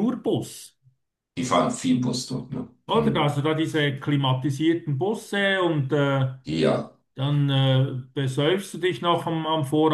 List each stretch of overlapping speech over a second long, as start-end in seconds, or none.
none